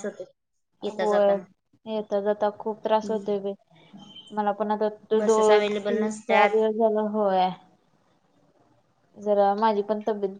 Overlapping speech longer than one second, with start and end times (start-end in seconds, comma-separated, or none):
5.2-6.6